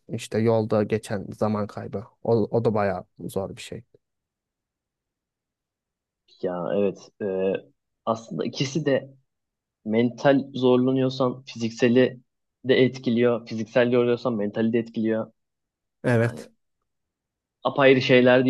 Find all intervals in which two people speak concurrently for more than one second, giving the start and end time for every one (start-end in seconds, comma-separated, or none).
none